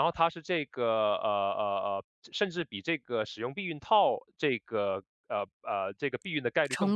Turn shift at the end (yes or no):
yes